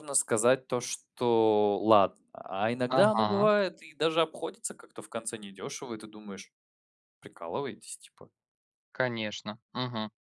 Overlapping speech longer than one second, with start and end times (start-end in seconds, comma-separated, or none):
none